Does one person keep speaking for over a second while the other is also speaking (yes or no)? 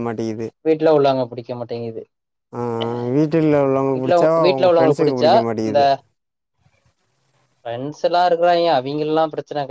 yes